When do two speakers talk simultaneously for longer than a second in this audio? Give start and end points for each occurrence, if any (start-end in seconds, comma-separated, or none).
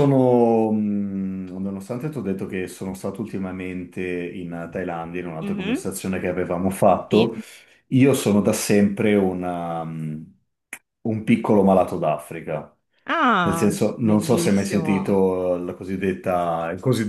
13.4-15.2